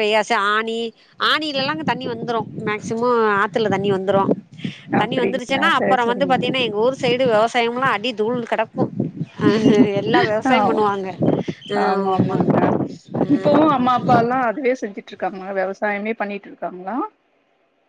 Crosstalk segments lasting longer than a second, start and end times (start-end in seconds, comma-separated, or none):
5.0-6.4